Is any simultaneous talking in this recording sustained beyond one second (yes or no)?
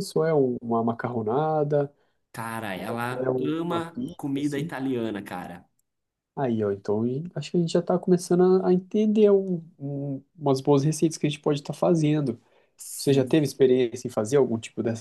yes